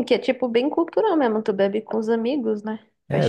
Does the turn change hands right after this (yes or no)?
yes